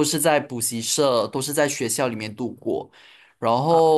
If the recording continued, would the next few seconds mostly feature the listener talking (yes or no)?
no